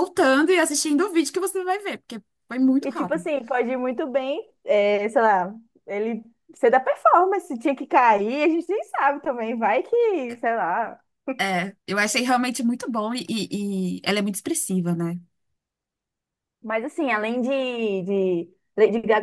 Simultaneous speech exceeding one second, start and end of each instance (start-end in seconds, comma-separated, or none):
none